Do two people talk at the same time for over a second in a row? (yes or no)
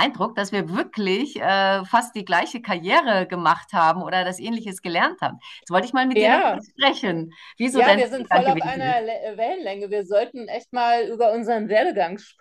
yes